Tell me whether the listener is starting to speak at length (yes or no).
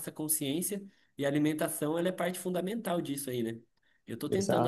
no